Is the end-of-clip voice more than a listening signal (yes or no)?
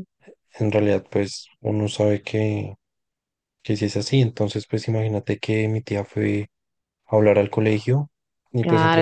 yes